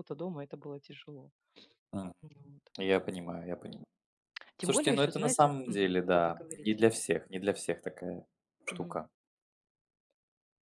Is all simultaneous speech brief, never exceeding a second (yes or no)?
no